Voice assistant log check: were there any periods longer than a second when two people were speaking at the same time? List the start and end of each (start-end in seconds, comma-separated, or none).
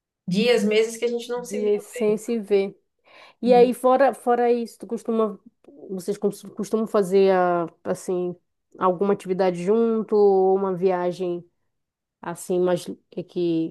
none